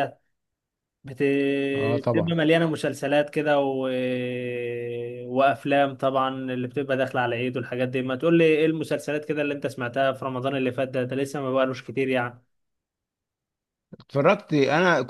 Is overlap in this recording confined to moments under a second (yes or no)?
yes